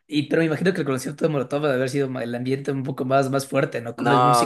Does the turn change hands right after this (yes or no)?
yes